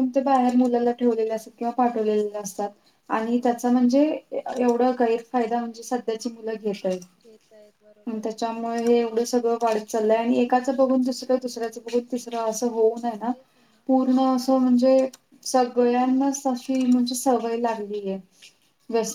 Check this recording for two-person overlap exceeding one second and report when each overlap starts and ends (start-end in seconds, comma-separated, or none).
none